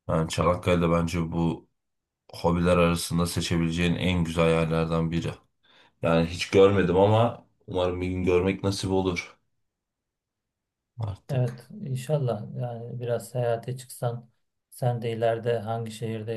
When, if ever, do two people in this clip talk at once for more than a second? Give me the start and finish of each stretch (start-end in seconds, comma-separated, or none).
none